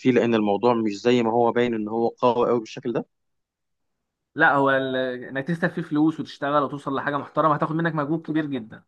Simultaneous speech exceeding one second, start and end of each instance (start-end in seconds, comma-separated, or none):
none